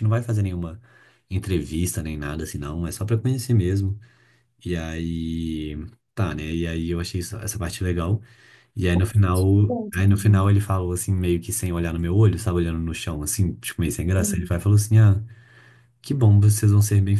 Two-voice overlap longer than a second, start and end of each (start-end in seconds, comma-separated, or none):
9.2-10.5